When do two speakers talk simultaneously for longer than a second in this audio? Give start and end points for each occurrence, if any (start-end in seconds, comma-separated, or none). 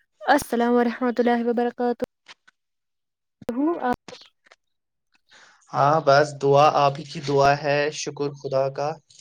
none